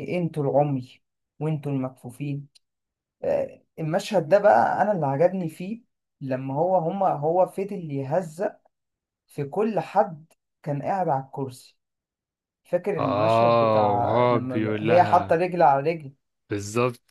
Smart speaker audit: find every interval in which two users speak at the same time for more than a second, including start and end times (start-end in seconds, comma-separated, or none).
13.0-15.4